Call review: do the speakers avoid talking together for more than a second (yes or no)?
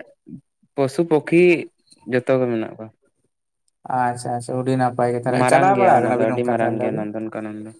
no